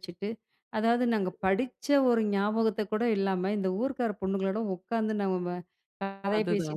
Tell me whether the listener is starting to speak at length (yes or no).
no